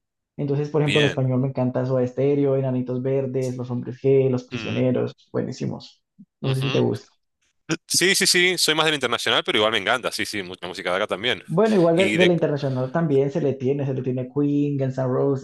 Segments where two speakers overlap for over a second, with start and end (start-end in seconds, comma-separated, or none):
none